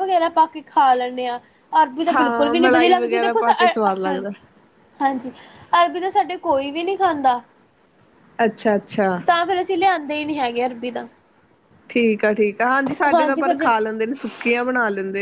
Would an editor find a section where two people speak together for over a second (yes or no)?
yes